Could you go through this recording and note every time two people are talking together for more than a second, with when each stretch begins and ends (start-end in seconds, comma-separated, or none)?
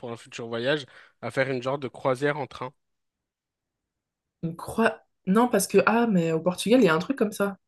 none